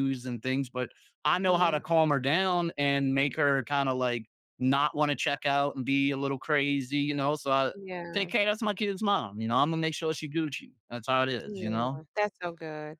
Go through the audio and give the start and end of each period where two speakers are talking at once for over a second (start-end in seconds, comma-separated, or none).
none